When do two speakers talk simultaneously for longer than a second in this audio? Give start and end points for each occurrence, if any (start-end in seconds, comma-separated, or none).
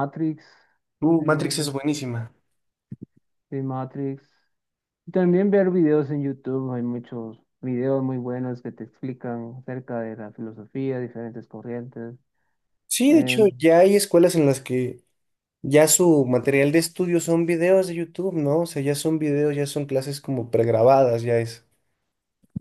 none